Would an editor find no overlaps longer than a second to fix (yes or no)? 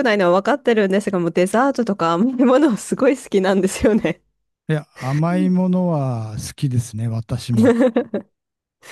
yes